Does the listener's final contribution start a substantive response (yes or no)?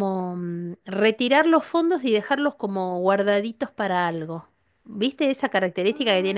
yes